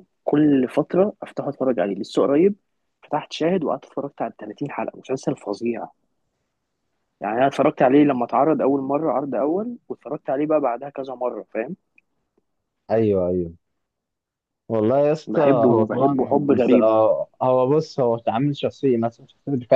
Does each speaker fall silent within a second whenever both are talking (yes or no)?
no